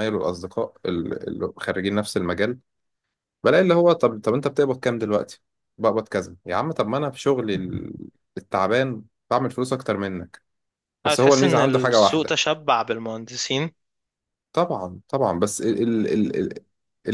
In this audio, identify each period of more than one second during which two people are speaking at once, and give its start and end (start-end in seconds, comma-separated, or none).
11.1-12.4